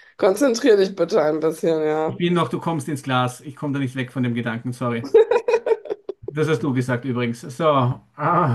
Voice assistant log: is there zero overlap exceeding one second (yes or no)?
yes